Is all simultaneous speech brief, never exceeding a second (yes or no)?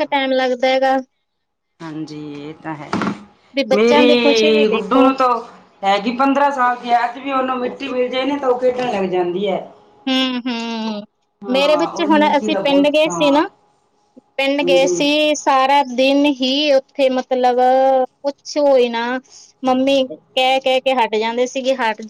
no